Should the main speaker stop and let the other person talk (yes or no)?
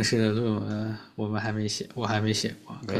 yes